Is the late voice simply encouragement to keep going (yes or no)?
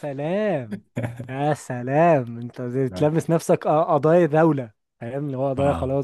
no